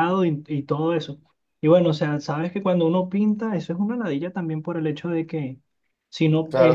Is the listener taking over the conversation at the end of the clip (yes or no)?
yes